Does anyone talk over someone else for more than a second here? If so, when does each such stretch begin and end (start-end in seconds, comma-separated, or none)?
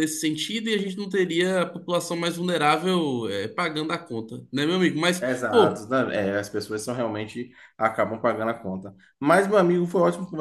none